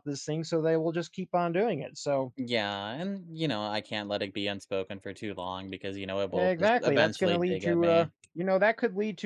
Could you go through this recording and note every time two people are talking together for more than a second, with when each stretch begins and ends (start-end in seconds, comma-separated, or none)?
6.3-8.1